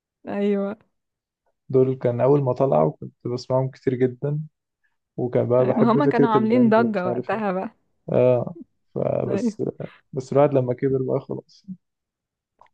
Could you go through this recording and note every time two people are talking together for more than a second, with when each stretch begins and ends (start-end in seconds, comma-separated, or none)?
5.8-7.4